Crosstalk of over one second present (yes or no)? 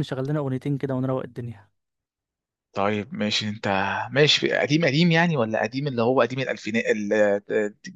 no